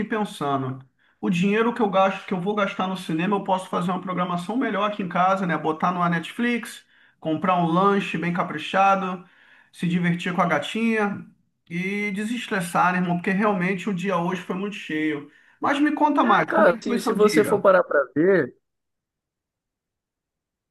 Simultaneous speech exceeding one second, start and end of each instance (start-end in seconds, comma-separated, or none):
16.2-17.6